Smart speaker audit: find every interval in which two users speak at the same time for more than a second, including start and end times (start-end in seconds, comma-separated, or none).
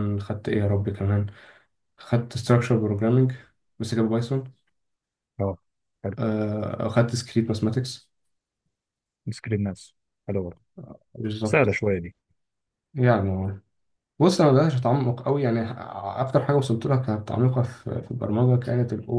none